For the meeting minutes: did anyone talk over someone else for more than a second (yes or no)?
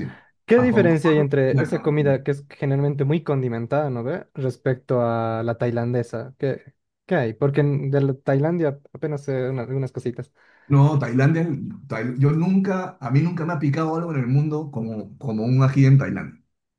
yes